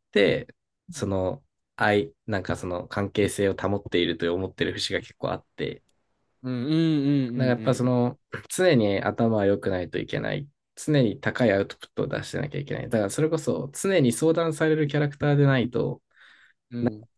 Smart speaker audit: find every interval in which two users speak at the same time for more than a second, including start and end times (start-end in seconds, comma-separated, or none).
none